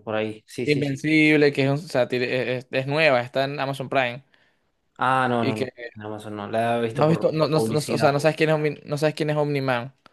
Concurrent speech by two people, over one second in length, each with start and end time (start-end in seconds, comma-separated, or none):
6.9-8.2